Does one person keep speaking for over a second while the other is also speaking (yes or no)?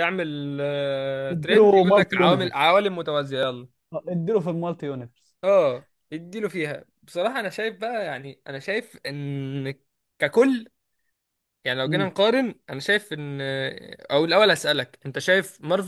yes